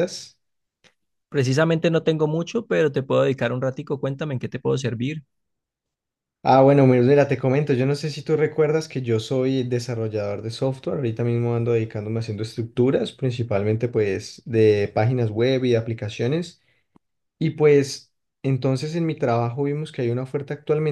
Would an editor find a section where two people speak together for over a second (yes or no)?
no